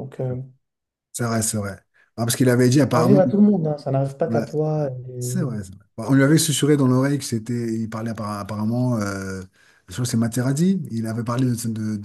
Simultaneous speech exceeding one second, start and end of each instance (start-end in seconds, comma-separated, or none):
none